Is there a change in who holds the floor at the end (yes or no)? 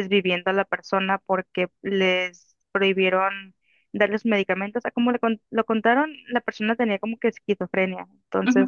no